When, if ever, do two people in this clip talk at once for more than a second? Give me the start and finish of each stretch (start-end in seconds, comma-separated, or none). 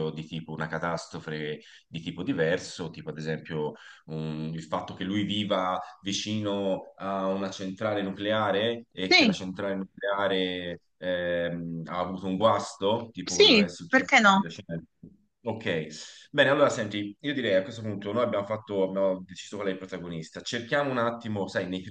13.2-14.5